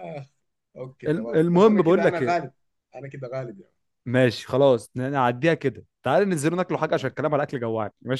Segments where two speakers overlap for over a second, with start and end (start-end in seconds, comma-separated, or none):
1.1-2.4